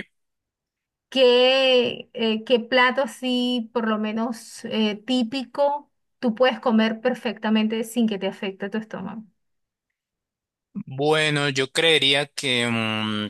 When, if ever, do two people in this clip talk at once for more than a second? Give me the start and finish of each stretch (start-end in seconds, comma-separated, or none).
none